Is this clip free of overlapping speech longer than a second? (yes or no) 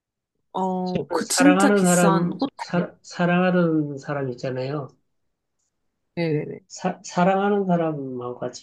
no